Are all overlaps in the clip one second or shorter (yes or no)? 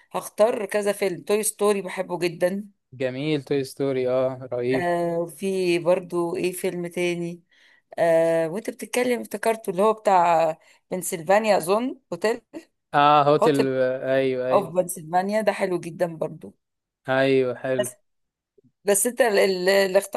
yes